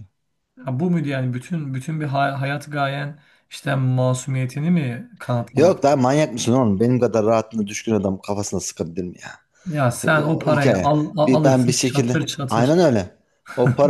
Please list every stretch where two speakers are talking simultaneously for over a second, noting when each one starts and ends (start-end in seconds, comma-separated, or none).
10.2-12.8